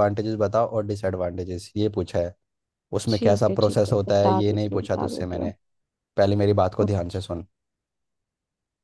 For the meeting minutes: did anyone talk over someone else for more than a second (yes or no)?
yes